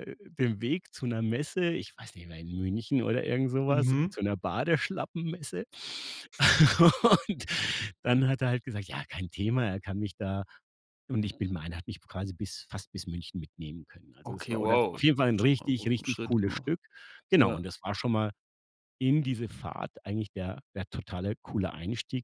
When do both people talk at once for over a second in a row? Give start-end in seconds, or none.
14.3-16.7